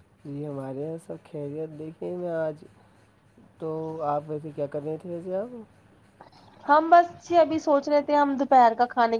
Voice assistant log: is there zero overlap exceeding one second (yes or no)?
yes